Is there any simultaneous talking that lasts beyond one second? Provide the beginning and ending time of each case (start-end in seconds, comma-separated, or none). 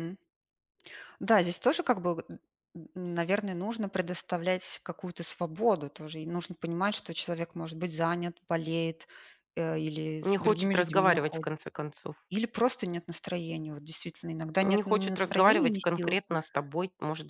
10.2-11.5, 14.6-16.2